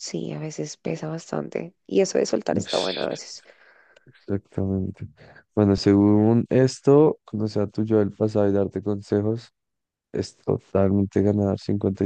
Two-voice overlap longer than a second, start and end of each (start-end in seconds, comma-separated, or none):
none